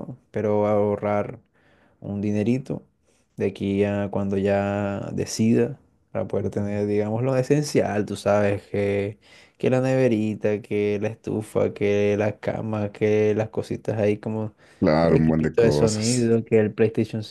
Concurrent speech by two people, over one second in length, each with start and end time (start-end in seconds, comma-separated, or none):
15.0-16.3